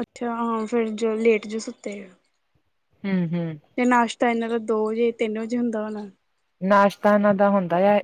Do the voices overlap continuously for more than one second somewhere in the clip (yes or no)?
no